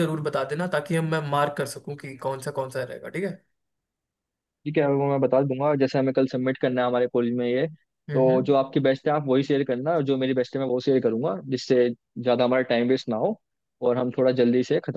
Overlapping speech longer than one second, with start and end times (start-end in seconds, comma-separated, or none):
none